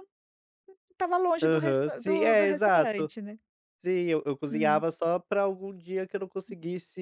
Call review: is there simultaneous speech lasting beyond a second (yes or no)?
yes